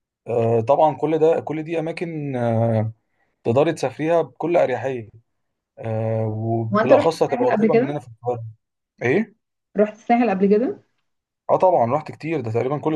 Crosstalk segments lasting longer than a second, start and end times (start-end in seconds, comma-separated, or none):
6.7-7.9